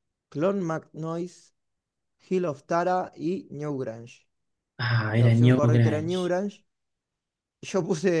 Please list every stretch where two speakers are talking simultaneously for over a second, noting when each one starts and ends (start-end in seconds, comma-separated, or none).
5.1-6.3